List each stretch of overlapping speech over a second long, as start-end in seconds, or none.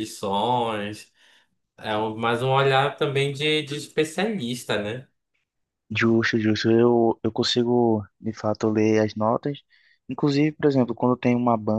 none